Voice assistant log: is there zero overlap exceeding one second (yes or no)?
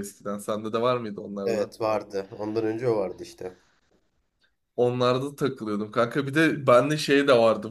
yes